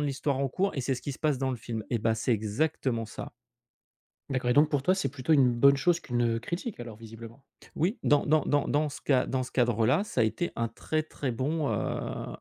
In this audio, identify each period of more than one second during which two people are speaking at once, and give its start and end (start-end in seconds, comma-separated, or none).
none